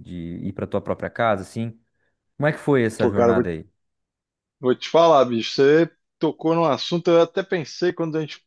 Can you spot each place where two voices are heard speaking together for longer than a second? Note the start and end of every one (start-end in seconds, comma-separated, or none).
none